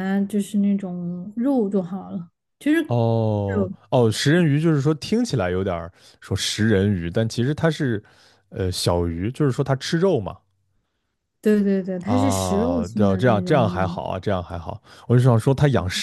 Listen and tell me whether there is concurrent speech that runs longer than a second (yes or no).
yes